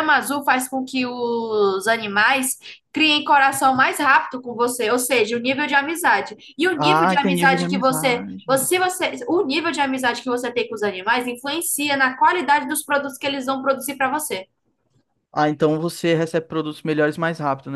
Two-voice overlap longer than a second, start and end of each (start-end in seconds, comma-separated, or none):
6.8-8.7